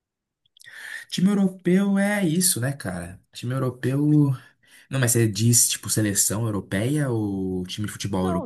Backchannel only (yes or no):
no